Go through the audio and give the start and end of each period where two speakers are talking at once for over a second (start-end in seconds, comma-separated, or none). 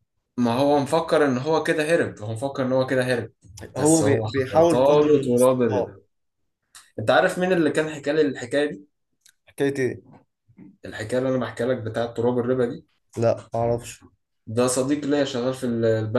3.8-5.9